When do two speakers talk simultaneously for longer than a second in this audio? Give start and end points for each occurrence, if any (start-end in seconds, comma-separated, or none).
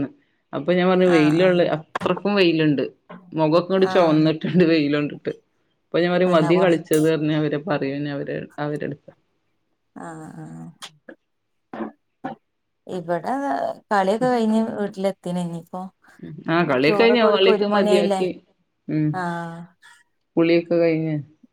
16.9-18.2